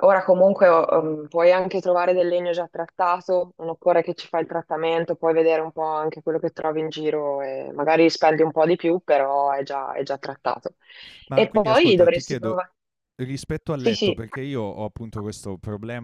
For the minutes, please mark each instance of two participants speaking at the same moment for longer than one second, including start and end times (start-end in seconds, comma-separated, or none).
11.3-12.6